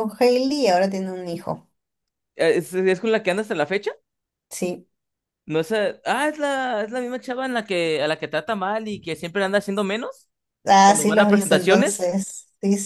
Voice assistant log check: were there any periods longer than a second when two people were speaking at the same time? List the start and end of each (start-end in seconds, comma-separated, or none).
10.9-12.1